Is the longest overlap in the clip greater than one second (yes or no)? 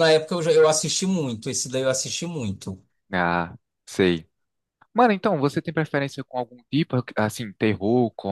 no